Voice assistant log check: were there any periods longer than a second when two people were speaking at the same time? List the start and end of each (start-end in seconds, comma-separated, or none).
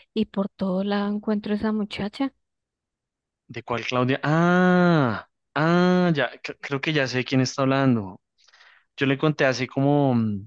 none